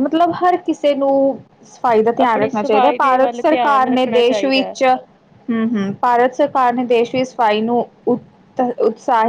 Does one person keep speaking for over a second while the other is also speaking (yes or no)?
yes